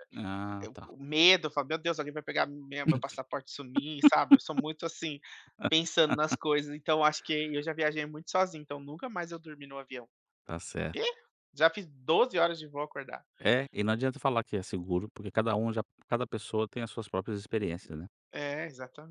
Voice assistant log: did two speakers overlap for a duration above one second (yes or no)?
no